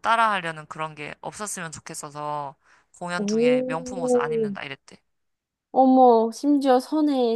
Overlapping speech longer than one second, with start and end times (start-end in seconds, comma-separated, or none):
3.2-4.5